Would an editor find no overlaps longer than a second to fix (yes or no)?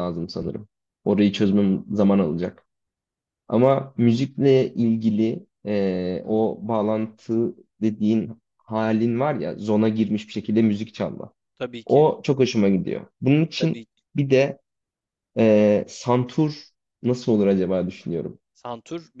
yes